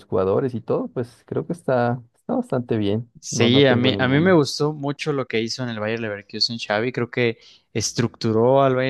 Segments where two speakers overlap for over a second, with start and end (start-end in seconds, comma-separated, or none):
3.2-4.4